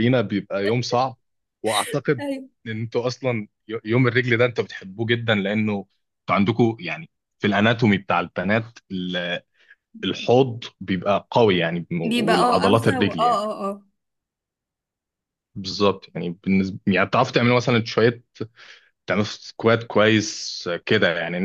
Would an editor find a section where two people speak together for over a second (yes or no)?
yes